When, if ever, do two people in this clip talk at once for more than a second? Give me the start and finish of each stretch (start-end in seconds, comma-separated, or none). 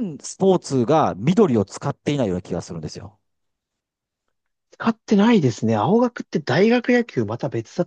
none